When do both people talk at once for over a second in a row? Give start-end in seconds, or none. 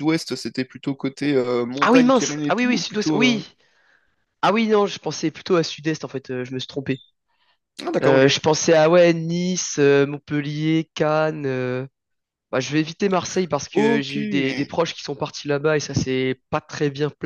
1.8-3.4